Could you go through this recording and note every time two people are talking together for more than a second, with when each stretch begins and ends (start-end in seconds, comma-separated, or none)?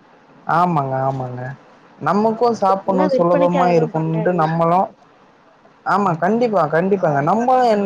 2.9-4.4